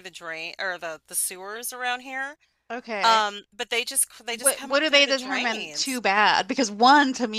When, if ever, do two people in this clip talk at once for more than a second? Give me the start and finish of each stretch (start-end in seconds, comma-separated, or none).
4.3-6.0